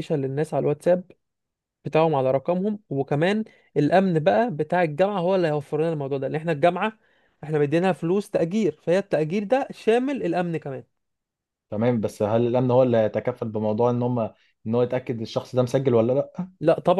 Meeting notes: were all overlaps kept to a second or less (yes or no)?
yes